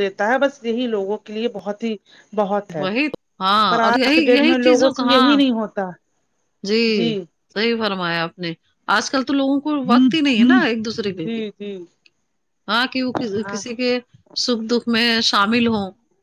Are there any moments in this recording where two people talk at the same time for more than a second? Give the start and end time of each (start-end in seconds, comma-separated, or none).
3.7-5.4